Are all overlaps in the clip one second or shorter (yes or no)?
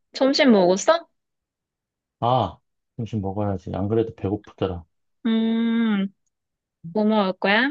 yes